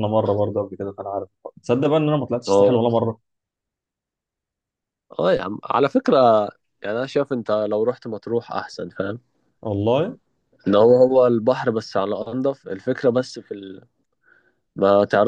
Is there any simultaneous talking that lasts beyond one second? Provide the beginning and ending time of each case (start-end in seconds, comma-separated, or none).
none